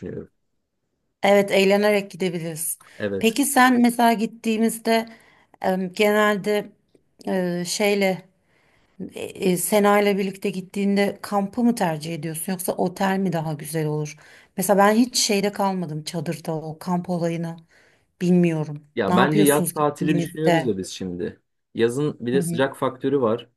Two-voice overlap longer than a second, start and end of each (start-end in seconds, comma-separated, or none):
18.9-20.7